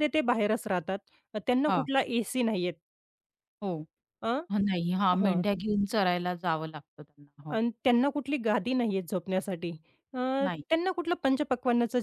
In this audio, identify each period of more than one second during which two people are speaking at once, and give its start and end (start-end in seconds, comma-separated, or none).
none